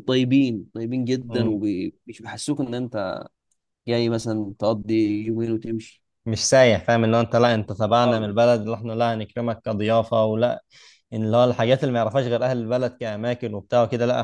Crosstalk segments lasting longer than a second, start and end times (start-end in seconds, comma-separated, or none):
none